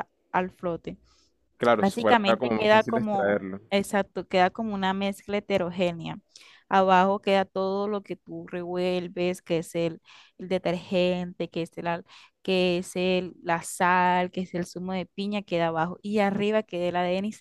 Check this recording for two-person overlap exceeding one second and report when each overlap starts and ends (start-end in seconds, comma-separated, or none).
1.8-3.6